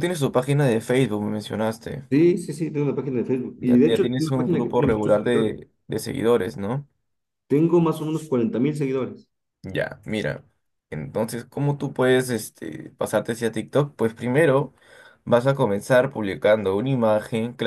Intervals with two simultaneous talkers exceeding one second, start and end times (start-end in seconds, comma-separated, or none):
3.6-5.5